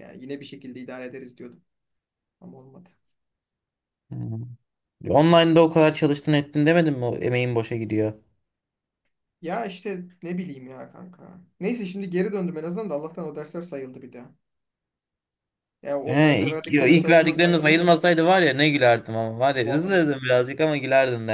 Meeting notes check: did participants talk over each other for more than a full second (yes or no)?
yes